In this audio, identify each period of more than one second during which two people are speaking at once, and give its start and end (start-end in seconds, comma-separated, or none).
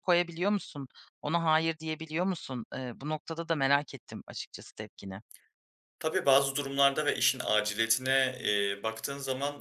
none